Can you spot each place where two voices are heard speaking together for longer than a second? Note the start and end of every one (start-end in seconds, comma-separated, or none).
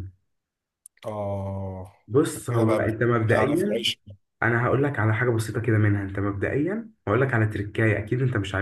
2.5-3.9